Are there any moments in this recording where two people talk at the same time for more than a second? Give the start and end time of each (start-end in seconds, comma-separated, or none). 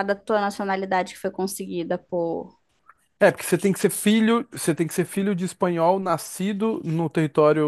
none